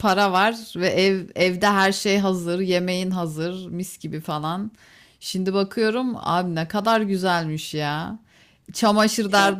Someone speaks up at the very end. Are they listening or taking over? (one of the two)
listening